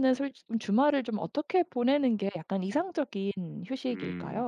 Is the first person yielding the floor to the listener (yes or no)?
yes